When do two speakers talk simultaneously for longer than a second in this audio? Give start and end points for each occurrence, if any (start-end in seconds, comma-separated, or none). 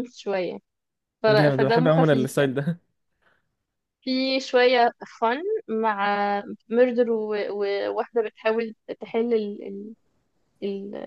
1.3-2.5